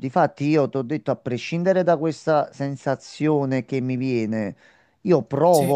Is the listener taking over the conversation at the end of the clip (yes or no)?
no